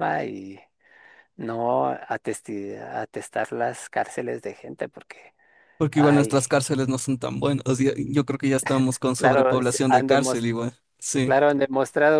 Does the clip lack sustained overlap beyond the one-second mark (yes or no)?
no